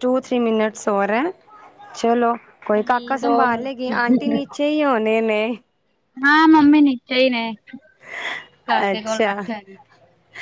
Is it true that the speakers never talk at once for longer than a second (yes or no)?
yes